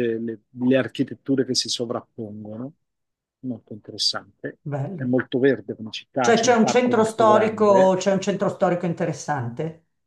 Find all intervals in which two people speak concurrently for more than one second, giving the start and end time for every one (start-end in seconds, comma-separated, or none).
6.2-8.0